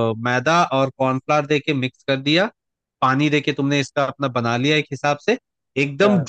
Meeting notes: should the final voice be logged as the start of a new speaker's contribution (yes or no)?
no